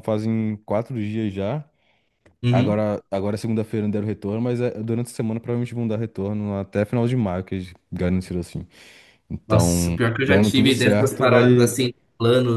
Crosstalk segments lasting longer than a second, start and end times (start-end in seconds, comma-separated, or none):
9.5-11.7